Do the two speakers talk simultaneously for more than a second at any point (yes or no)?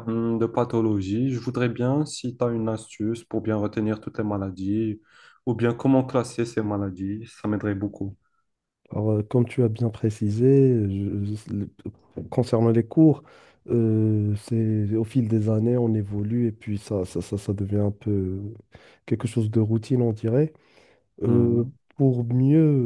no